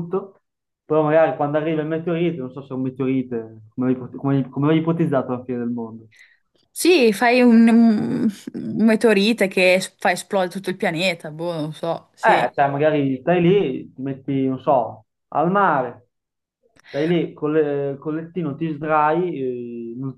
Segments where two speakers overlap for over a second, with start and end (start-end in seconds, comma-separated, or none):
none